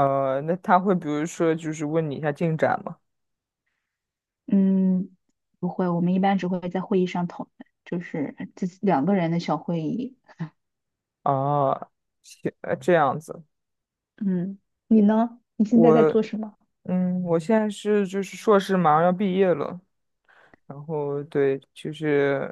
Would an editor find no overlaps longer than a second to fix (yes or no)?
yes